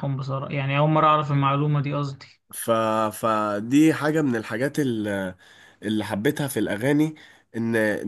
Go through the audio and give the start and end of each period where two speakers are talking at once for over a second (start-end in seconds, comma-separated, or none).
none